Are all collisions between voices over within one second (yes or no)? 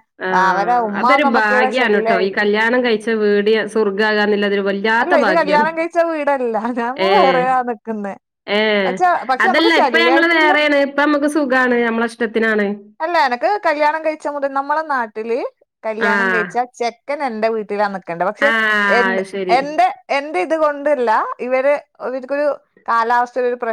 no